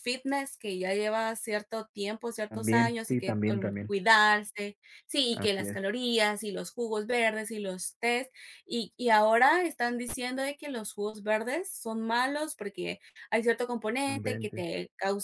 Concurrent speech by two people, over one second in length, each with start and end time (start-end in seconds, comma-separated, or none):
2.5-3.9